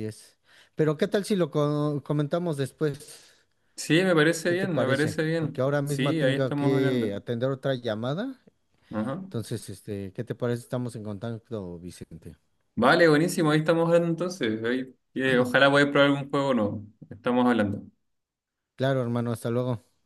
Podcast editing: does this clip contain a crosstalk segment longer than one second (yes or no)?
yes